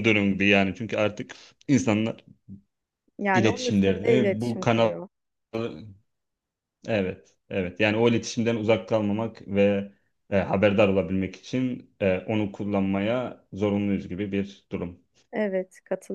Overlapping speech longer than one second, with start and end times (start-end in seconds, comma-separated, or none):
3.3-4.9